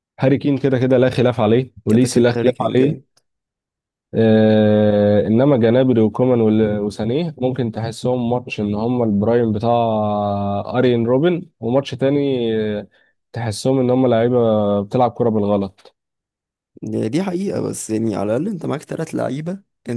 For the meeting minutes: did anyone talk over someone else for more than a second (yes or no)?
yes